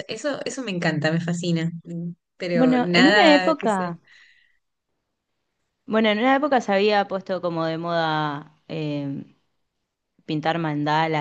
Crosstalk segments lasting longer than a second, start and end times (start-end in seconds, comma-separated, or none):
2.5-3.9